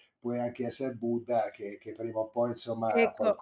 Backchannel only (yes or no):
no